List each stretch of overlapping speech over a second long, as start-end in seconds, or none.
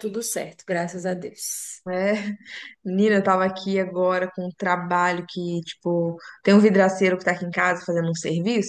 none